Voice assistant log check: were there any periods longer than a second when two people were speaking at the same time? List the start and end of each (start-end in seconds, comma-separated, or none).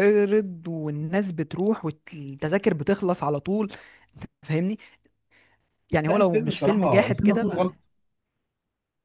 6.1-7.8